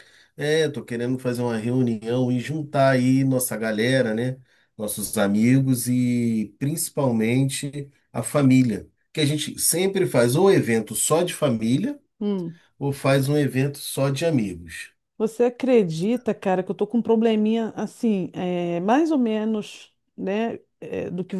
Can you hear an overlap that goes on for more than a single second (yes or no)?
no